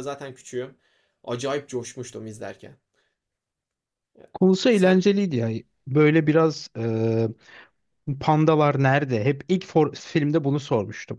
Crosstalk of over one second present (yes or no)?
no